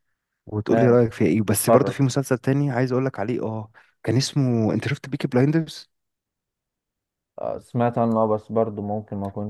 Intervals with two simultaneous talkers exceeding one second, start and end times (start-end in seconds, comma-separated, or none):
none